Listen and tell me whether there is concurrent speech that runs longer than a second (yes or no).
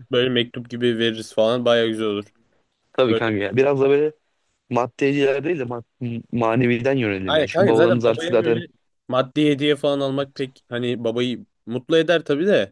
yes